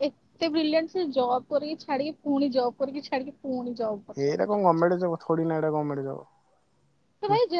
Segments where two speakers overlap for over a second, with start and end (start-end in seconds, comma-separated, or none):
none